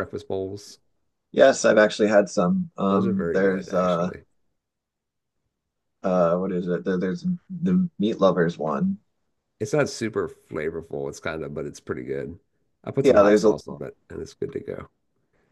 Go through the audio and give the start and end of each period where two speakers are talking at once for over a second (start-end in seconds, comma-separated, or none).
2.9-4.1